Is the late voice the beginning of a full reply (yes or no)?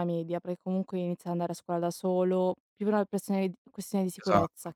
yes